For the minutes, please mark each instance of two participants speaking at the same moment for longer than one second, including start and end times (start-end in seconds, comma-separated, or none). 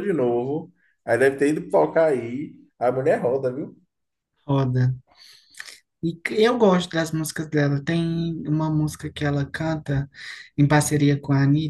none